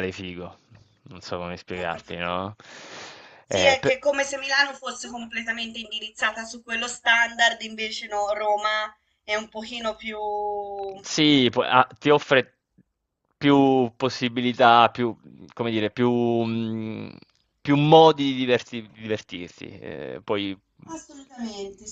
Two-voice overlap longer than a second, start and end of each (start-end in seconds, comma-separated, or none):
none